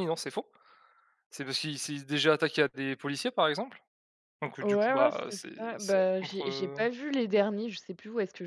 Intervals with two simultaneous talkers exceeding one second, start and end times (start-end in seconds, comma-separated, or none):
4.6-6.8